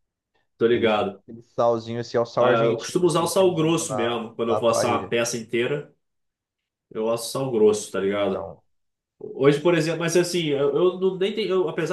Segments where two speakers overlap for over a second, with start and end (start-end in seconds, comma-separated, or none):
2.3-5.1